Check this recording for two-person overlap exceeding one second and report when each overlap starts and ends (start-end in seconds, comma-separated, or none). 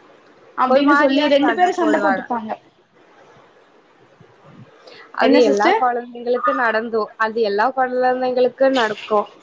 0.7-2.2